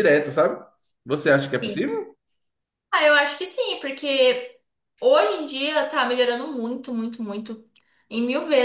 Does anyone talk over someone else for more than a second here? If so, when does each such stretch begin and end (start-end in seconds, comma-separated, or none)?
none